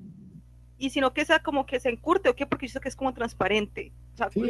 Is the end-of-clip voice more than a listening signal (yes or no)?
yes